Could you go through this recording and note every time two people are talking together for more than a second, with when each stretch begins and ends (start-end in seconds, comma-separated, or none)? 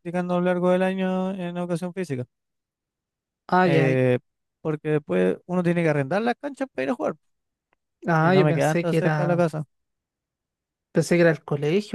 8.2-9.4